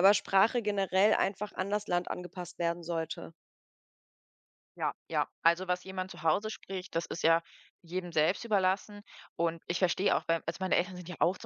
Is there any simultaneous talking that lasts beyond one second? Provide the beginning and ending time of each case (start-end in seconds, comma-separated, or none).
none